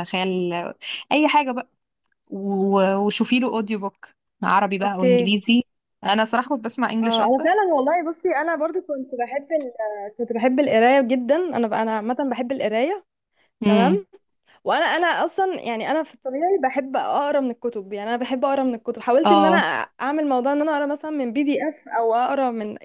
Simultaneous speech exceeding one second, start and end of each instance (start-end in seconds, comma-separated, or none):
none